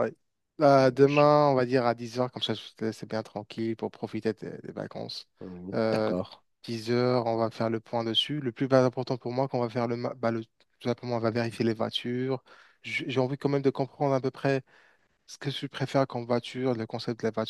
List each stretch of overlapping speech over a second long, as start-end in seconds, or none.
none